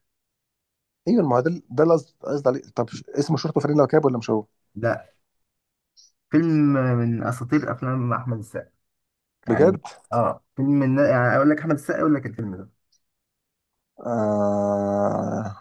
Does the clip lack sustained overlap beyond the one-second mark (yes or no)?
yes